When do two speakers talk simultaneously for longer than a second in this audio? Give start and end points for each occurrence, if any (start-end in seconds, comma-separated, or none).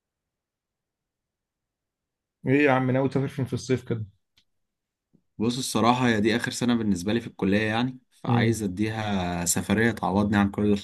none